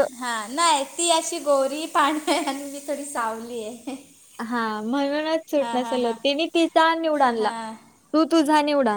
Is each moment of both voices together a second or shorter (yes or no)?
yes